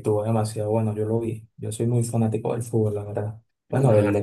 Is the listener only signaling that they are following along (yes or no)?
yes